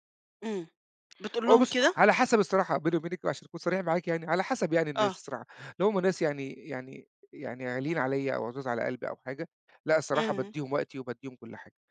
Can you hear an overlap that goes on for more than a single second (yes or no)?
no